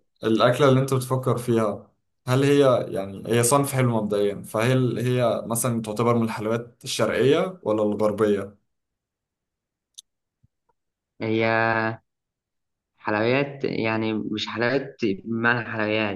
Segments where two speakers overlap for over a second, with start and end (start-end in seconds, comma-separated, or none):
none